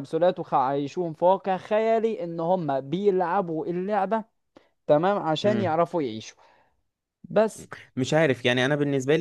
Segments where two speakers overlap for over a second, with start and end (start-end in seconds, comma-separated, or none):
none